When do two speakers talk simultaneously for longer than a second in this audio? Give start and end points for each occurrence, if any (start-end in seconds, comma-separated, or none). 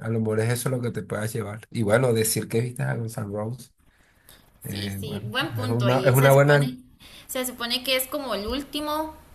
4.7-6.8